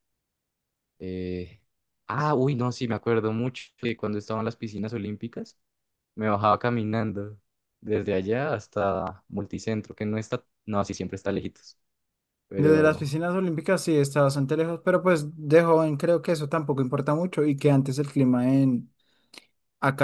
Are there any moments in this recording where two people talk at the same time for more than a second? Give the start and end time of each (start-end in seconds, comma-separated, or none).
none